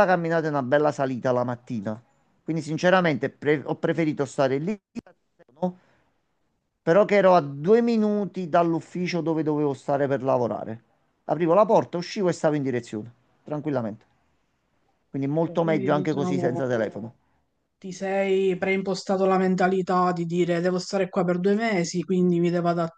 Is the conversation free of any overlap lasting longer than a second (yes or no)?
no